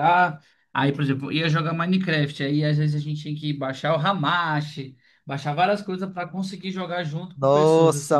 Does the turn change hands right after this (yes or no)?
yes